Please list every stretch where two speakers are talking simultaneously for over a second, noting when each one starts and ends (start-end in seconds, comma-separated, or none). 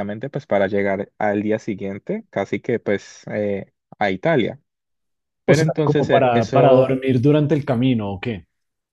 5.5-7.0